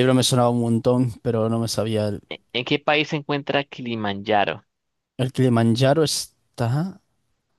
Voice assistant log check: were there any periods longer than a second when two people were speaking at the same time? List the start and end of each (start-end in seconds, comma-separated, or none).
none